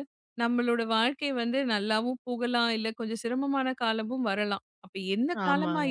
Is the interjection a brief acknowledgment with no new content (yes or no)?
yes